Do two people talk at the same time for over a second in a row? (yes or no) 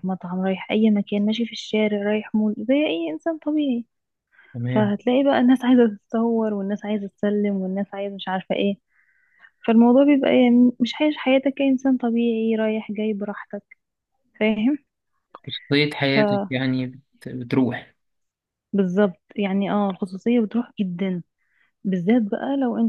no